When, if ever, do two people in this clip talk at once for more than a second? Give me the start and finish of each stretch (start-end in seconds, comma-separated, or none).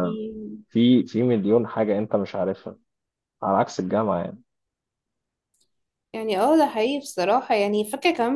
none